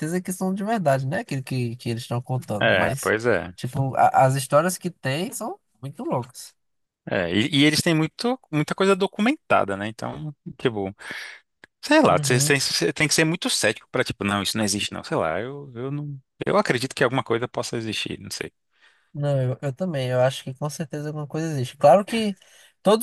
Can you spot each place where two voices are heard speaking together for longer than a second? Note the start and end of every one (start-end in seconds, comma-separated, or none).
none